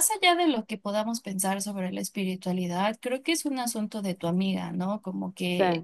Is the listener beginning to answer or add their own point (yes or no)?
no